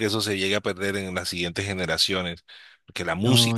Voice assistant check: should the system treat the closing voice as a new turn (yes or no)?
no